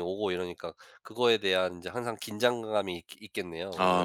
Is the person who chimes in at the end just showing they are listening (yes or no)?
no